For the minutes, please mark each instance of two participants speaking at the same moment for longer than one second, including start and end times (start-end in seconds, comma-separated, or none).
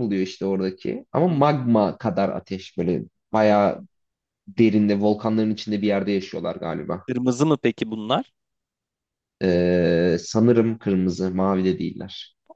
none